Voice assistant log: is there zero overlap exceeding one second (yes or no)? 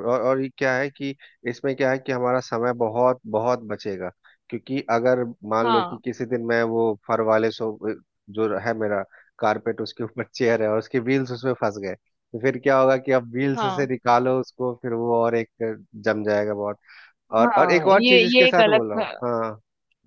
no